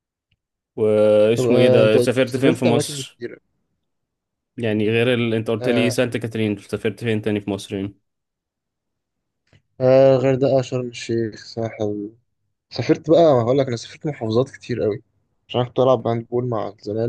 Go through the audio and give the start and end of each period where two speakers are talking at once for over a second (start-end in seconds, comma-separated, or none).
1.4-3.2